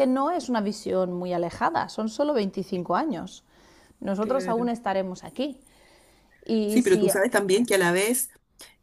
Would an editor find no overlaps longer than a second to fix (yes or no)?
yes